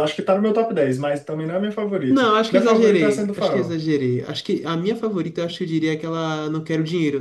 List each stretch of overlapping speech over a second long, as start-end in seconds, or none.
2.1-3.8